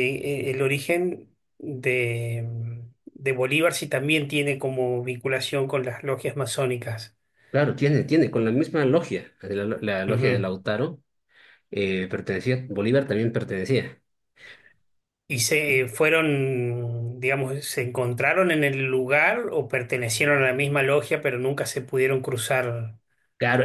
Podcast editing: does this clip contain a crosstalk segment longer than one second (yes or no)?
no